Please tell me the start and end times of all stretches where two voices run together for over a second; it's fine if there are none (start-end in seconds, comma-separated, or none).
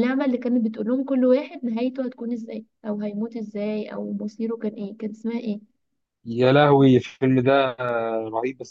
none